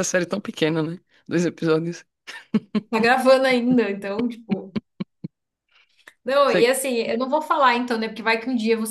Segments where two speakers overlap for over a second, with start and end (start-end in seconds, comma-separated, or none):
none